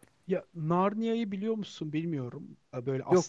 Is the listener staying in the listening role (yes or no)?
yes